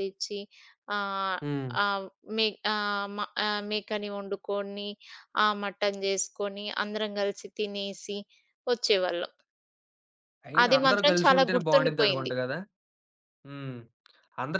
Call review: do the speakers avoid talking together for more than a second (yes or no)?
no